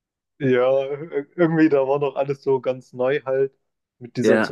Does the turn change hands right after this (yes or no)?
no